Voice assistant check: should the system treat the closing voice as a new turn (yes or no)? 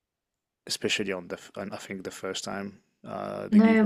yes